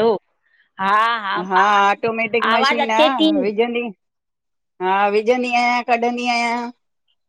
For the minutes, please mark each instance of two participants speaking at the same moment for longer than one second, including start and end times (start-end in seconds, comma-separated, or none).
1.9-3.3